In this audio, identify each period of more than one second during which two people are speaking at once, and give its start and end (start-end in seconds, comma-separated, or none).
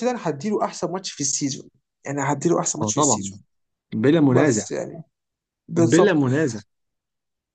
none